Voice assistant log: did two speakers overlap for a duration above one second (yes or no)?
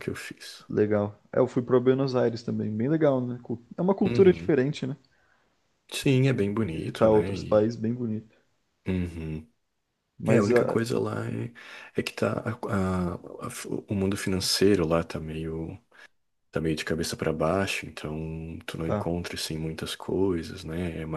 yes